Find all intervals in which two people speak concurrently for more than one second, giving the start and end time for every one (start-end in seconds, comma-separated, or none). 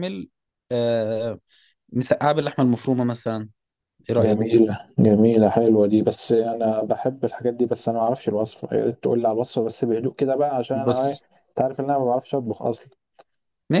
none